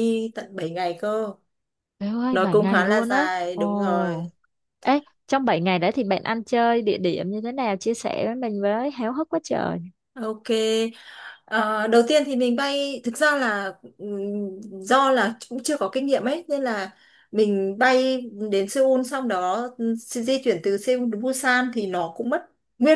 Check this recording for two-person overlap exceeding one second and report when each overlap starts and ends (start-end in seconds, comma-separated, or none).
2.3-4.3